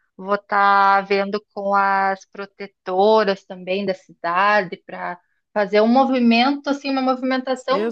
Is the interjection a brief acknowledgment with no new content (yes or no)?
no